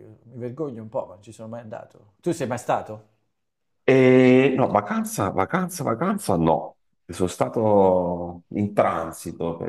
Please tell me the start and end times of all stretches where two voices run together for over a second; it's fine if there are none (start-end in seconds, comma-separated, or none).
none